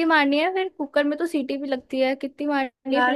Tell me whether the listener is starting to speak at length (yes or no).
yes